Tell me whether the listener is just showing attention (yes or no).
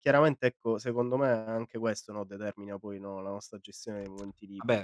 no